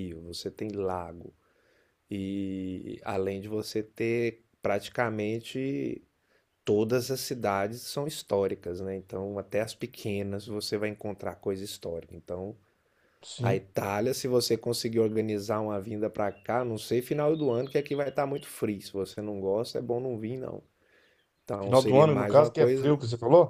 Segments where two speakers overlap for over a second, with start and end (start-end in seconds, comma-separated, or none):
21.6-23.0